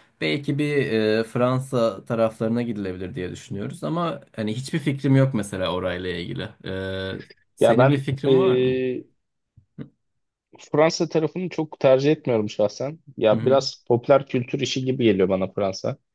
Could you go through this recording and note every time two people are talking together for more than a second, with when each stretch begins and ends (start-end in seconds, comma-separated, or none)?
7.6-8.8